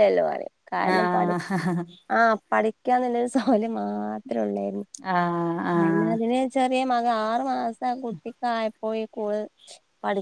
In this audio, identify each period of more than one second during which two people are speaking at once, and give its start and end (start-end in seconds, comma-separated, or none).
none